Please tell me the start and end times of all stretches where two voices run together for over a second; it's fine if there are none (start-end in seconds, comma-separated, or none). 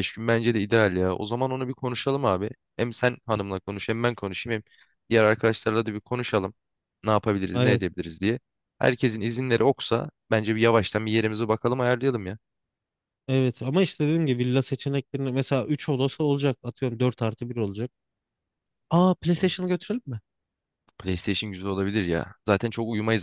none